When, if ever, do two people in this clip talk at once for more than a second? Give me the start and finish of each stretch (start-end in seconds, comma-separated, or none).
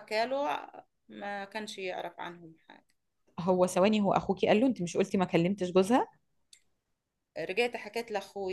none